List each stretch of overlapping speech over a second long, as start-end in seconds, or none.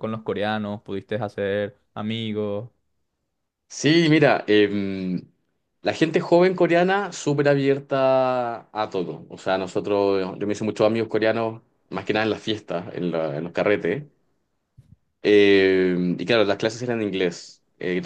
none